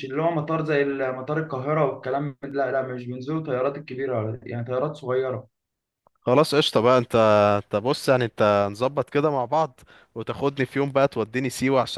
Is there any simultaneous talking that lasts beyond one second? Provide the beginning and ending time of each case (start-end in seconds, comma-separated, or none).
none